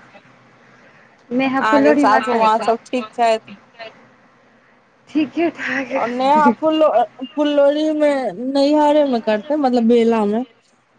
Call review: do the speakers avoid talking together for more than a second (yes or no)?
no